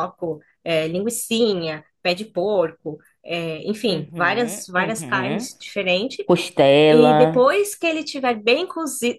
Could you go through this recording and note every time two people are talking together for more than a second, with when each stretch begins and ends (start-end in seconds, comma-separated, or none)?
3.9-5.5